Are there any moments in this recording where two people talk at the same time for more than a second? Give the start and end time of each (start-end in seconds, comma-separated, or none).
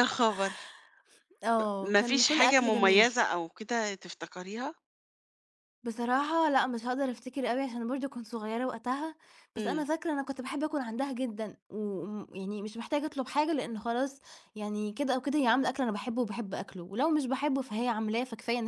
1.6-3.1